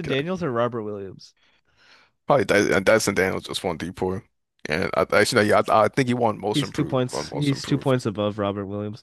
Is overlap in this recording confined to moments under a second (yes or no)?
no